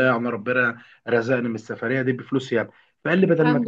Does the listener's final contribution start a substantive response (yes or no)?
no